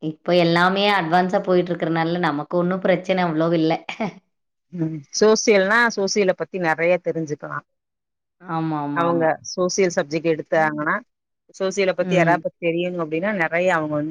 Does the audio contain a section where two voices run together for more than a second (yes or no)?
no